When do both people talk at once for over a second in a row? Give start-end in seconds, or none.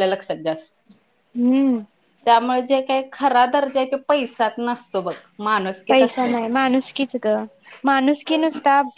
none